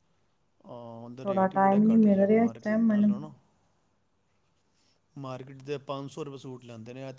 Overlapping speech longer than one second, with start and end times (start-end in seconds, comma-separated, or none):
1.2-3.1